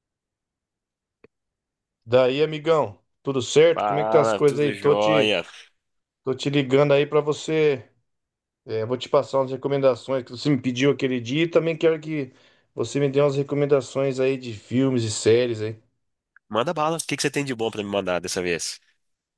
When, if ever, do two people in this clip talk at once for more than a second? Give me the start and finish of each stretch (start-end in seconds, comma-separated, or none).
3.7-5.4